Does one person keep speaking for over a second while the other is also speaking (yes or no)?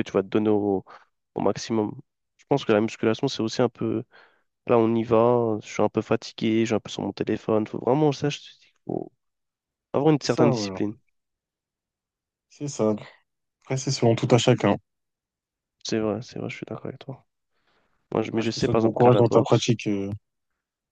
yes